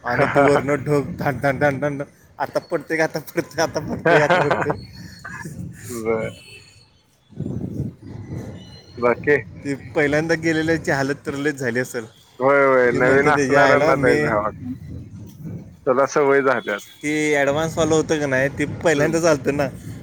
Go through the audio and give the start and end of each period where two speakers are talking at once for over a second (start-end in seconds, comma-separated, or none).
12.9-14.2